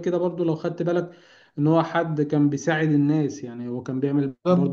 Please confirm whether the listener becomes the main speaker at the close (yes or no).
no